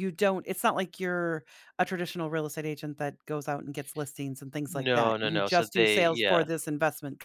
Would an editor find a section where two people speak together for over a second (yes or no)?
yes